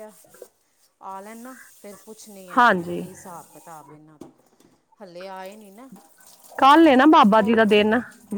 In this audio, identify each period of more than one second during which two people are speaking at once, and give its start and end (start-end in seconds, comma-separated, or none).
none